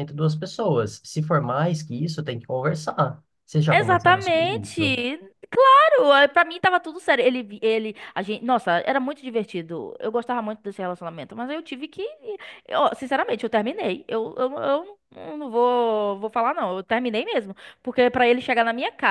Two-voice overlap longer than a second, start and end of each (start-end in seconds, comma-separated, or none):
3.7-5.0